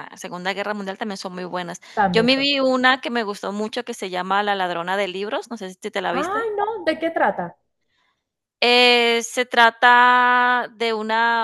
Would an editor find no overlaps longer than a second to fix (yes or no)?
yes